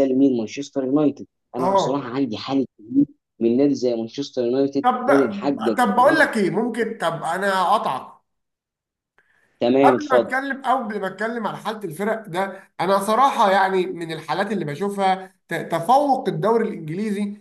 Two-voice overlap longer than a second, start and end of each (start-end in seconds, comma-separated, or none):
none